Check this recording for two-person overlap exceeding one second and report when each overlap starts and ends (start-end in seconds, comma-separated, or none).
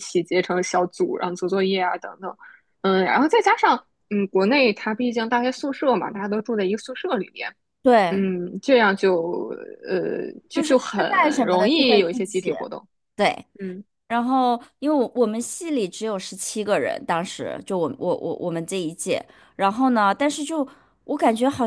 10.8-12.6